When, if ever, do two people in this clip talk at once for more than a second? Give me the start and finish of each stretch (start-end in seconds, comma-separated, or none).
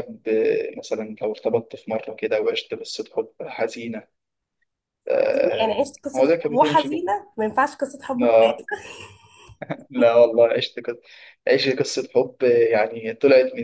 5.2-7.1